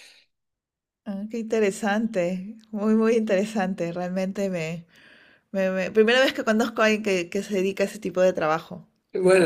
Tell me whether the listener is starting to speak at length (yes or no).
yes